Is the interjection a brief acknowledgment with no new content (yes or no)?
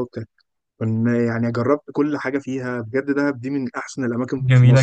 no